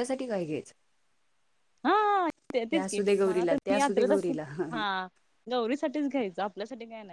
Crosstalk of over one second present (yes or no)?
yes